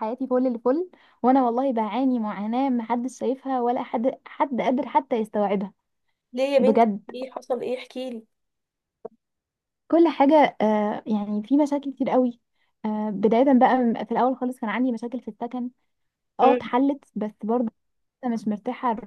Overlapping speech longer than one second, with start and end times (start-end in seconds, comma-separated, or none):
none